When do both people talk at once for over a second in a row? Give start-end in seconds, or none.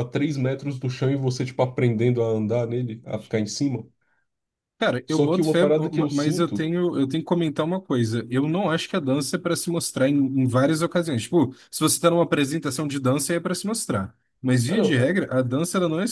5.1-6.7